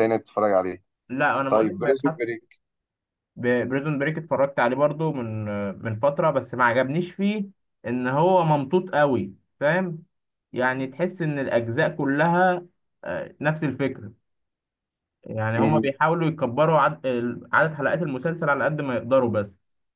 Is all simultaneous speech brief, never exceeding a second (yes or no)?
yes